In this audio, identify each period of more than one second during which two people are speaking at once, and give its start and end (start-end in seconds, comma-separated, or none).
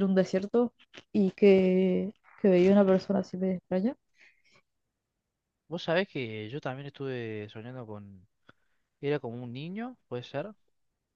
none